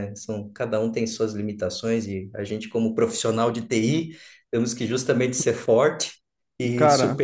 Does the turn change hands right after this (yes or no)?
no